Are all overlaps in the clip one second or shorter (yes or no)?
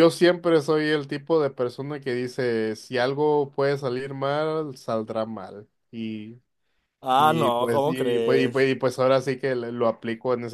no